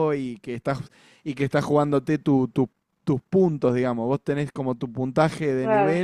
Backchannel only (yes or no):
yes